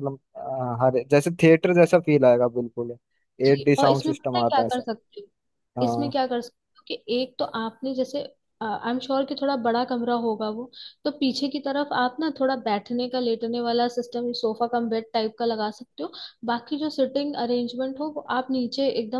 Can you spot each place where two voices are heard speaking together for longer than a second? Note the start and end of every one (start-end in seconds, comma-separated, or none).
3.4-4.8